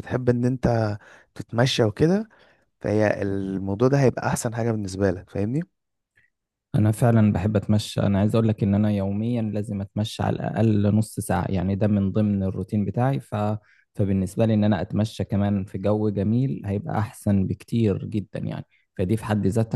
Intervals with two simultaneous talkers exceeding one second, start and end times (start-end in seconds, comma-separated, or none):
none